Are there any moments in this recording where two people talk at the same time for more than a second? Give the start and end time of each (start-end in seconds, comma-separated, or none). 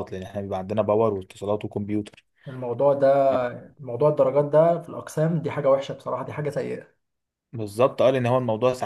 none